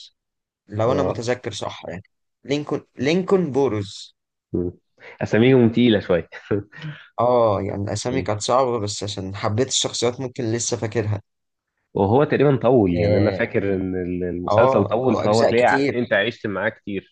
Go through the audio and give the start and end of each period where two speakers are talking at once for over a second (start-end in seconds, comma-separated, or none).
14.5-15.9